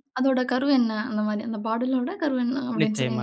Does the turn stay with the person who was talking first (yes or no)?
no